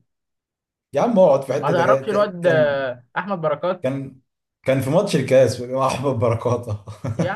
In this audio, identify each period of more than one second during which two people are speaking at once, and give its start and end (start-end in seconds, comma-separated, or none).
1.6-2.9